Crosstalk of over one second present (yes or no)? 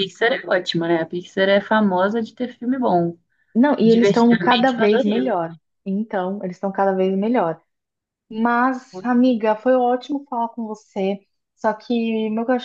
yes